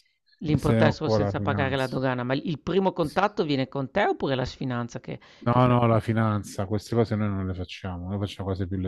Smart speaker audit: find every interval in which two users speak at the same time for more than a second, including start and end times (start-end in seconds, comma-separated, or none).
0.6-1.9